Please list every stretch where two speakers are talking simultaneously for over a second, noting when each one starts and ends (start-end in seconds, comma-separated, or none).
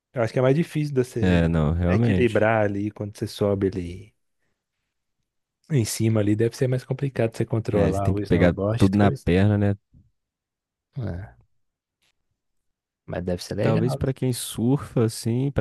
1.2-2.5, 7.7-9.3